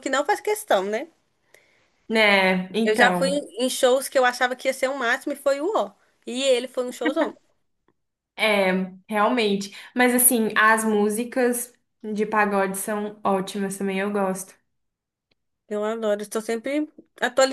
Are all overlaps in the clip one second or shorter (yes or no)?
yes